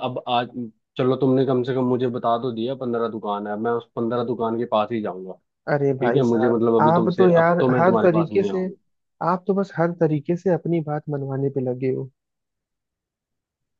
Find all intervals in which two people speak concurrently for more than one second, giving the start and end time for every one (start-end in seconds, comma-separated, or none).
6.0-8.7